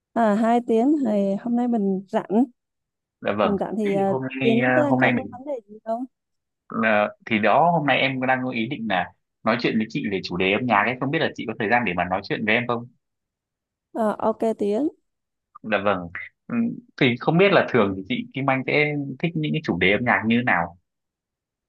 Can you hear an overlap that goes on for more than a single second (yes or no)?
yes